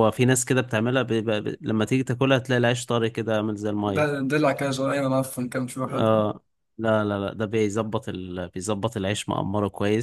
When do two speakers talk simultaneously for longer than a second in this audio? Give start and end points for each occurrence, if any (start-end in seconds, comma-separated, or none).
none